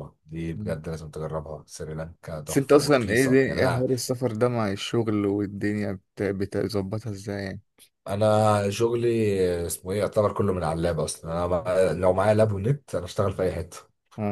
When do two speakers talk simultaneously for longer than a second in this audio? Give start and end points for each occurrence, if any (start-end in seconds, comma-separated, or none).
2.5-3.9